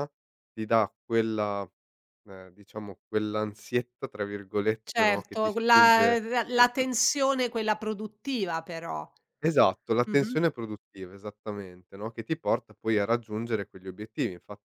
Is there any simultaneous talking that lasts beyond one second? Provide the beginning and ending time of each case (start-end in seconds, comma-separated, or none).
4.8-6.2